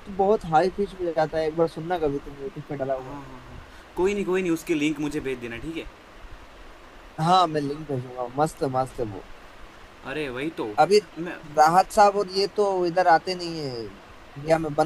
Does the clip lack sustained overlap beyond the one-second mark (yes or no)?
yes